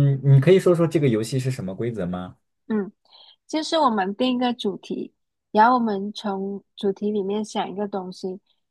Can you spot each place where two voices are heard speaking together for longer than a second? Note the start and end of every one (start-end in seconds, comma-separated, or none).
none